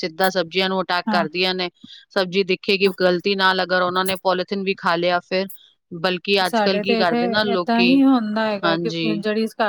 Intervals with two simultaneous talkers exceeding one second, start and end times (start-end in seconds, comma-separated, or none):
none